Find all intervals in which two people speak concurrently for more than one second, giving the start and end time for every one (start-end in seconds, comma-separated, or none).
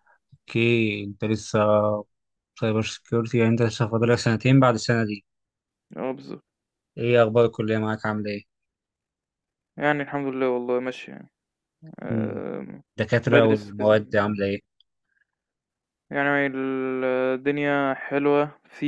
13.3-14.5